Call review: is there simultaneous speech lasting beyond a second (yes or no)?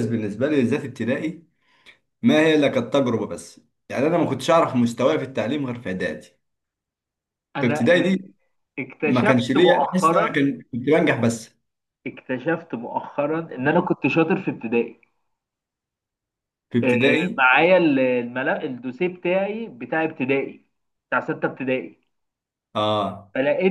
yes